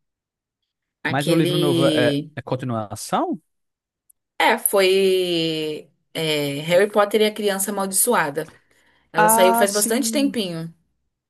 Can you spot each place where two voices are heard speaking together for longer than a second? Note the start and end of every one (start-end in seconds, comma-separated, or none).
1.1-2.3, 9.2-10.4